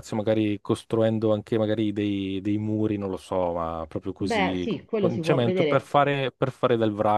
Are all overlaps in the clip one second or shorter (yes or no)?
no